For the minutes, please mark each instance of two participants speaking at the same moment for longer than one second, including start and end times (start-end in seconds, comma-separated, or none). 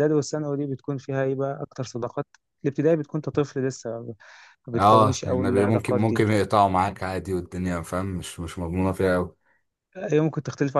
4.8-6.2